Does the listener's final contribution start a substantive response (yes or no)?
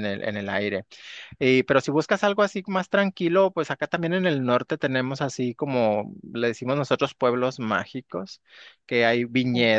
no